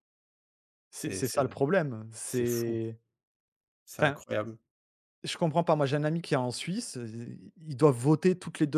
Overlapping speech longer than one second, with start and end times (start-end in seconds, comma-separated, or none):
none